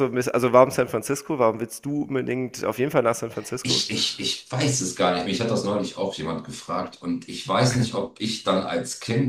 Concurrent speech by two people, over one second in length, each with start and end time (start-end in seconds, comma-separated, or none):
none